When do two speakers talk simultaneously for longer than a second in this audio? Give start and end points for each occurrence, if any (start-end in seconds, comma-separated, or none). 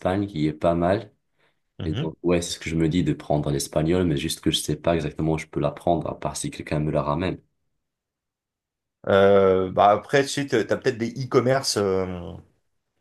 none